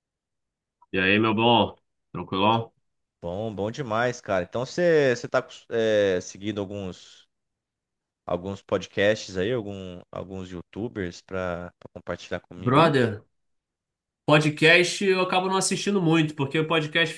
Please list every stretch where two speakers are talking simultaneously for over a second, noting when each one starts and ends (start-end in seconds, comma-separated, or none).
none